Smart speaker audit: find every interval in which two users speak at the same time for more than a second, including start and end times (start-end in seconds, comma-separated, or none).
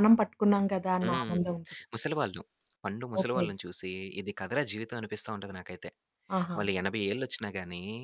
none